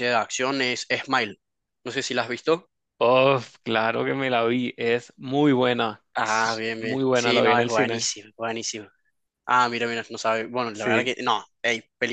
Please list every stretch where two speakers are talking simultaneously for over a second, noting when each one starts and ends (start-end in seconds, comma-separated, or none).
6.2-8.1